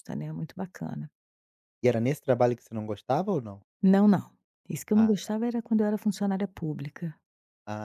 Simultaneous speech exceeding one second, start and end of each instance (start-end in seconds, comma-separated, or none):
none